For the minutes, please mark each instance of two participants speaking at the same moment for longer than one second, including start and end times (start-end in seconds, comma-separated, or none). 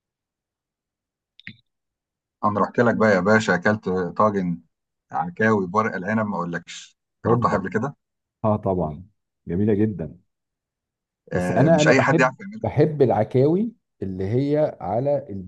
11.3-12.7